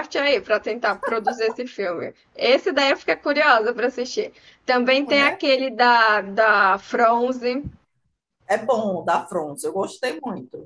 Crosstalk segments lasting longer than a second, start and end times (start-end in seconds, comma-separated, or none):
none